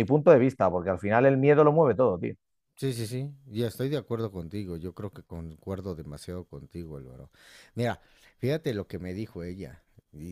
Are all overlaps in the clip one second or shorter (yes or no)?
yes